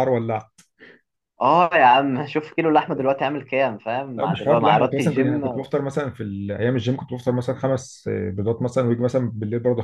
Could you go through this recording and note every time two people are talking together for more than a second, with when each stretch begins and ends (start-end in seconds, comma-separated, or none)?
4.2-5.4